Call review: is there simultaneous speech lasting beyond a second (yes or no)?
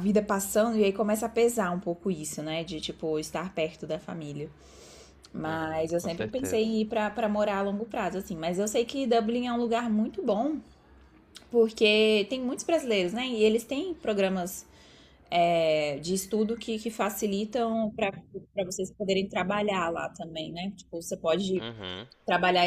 yes